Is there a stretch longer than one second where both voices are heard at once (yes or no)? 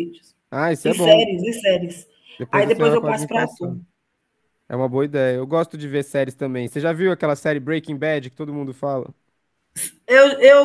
yes